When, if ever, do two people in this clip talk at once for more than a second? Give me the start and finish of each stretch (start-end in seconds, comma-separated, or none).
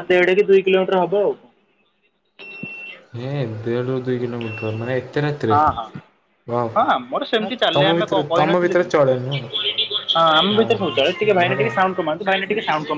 6.8-8.9